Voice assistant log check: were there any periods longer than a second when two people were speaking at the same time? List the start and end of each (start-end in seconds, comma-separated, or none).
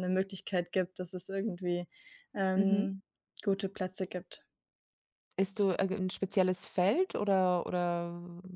none